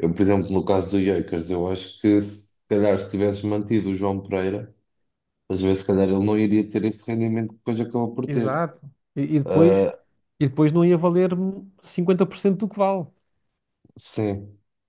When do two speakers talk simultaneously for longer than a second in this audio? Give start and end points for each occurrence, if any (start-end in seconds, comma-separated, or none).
none